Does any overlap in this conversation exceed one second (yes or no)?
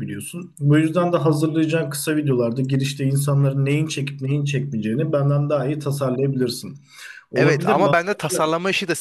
no